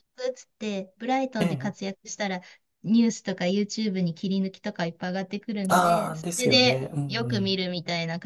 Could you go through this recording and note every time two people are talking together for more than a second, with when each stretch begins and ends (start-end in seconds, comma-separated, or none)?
5.7-7.6